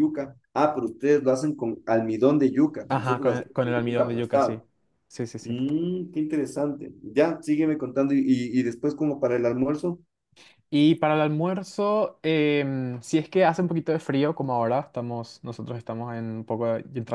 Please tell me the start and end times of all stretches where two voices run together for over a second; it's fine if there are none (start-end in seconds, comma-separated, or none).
2.9-4.6